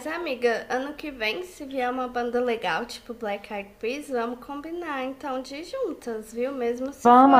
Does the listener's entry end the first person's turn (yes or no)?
no